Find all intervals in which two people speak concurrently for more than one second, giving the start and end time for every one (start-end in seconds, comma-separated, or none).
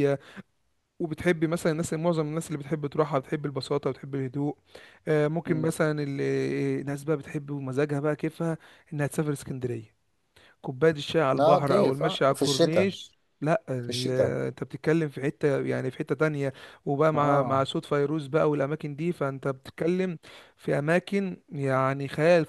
11.4-12.9